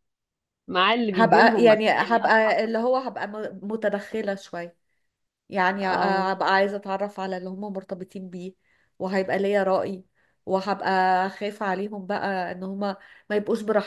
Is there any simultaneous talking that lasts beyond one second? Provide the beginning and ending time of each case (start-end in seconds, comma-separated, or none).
1.1-2.5